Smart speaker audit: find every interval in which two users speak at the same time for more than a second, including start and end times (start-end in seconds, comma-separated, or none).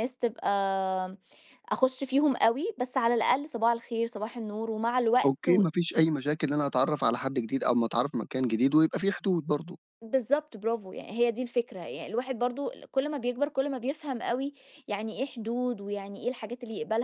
none